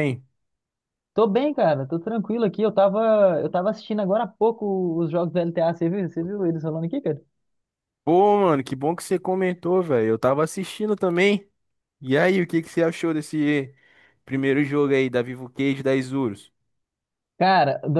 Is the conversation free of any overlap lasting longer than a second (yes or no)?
yes